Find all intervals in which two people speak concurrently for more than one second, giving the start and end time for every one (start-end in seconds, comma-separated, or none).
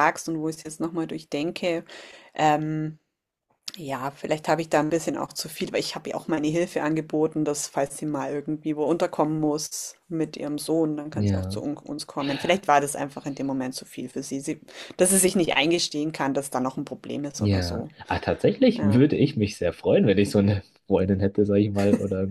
none